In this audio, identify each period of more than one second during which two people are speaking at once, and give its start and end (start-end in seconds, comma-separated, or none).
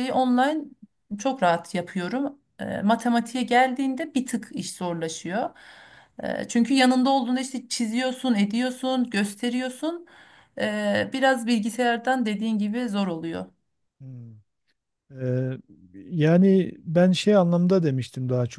none